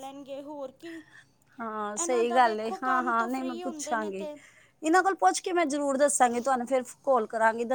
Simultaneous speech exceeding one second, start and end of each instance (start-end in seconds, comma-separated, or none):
1.8-4.3